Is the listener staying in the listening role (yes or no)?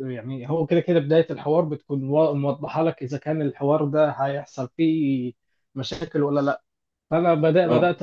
yes